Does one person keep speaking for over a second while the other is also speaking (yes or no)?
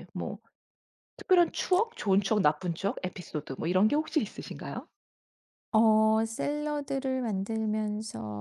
no